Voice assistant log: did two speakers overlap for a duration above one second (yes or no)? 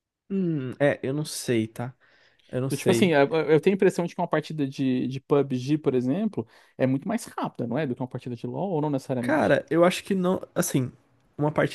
no